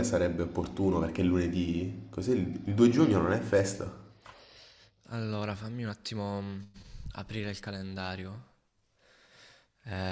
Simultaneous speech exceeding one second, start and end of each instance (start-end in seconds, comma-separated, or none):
none